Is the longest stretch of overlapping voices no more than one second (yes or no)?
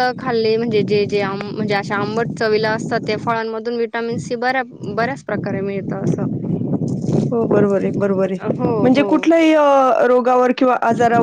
yes